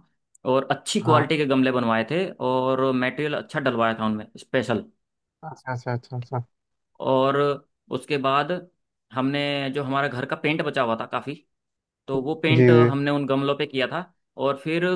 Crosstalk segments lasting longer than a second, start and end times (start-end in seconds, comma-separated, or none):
none